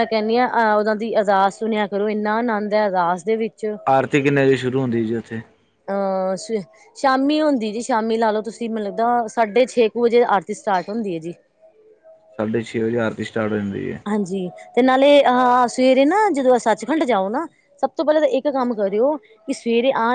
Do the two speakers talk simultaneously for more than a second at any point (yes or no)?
no